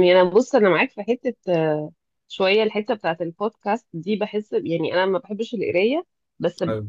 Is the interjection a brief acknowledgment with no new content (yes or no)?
yes